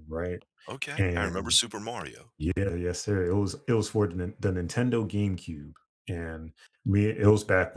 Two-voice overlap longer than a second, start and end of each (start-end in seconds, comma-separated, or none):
none